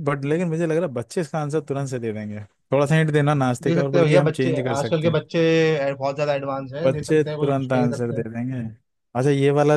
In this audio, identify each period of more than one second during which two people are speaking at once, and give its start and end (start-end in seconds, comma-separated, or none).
3.6-5.2, 6.8-8.2